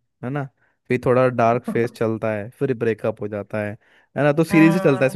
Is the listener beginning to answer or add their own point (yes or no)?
no